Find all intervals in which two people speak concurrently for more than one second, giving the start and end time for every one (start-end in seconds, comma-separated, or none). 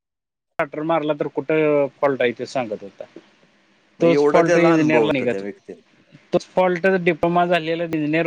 4.0-5.5